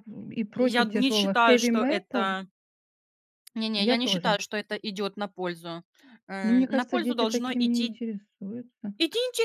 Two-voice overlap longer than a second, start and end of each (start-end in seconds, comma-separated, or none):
0.6-2.3, 6.4-8.0